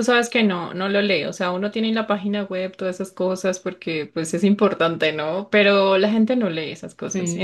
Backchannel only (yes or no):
yes